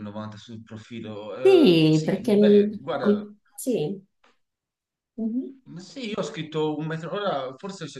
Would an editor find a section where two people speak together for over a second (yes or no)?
yes